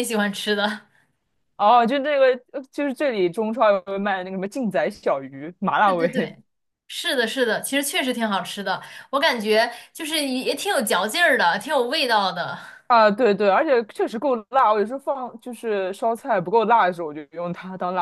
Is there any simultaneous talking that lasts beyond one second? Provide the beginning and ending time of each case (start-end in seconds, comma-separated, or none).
none